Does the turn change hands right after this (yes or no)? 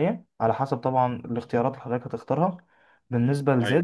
no